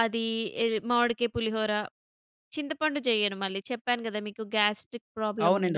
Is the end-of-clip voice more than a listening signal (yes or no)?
yes